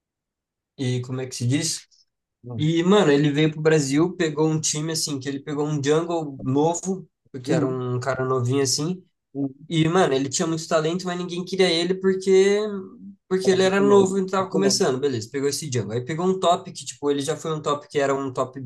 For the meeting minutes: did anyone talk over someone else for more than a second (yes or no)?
yes